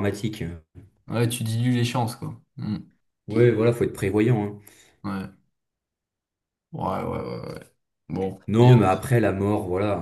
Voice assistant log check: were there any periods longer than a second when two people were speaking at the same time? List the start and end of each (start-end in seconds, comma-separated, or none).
none